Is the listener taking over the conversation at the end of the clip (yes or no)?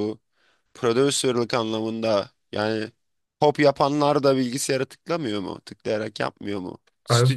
no